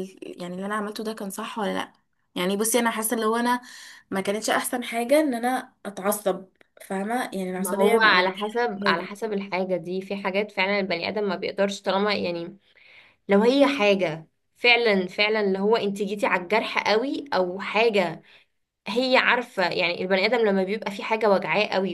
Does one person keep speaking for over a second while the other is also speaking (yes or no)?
yes